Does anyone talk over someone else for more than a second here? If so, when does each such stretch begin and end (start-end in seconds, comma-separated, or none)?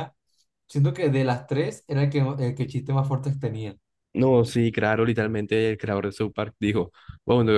none